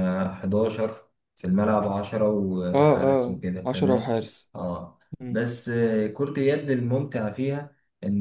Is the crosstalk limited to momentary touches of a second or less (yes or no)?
no